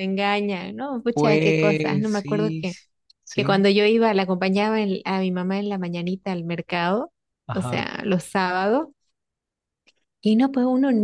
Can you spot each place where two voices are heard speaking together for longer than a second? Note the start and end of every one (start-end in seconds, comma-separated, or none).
1.1-2.6